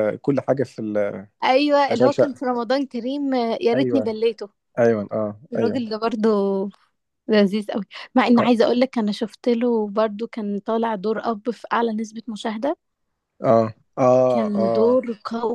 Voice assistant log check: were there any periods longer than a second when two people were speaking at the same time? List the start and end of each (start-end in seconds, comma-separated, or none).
none